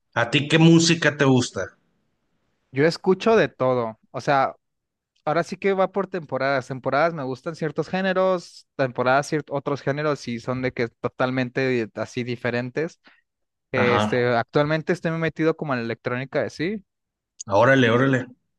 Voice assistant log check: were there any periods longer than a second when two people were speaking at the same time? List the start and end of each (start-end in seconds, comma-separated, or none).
none